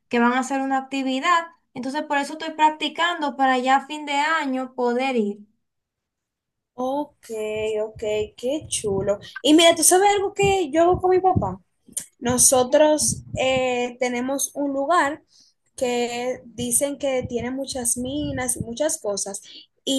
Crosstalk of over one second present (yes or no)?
no